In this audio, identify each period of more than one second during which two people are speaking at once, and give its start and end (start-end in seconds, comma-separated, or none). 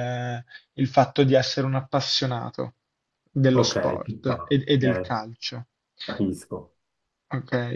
3.5-5.2